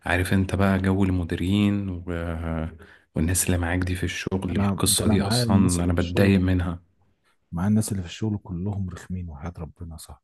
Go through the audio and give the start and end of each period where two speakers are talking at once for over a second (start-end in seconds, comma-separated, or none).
4.6-6.8